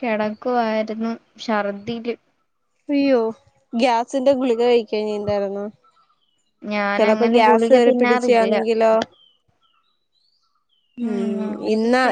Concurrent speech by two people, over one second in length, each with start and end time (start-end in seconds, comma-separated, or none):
7.0-8.5